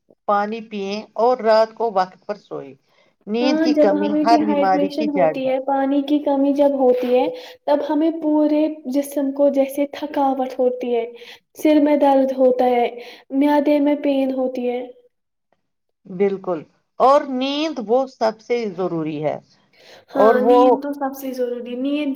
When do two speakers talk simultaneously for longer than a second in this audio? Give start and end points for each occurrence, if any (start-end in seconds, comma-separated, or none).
3.4-5.3